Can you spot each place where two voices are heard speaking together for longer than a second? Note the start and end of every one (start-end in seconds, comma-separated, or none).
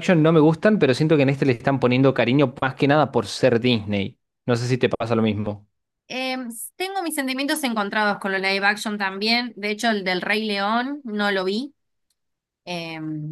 none